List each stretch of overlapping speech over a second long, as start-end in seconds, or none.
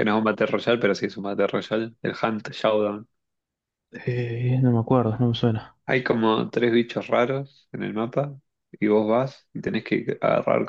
none